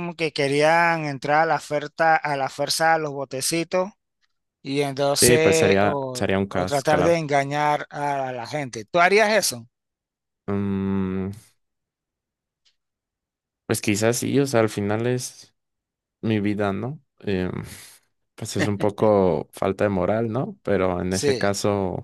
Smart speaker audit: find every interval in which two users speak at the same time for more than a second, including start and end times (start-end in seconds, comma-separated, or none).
5.2-7.2